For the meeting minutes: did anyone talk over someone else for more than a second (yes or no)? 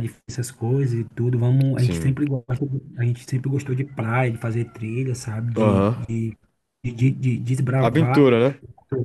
no